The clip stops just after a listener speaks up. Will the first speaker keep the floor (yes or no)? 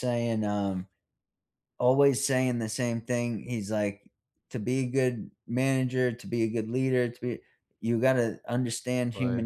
yes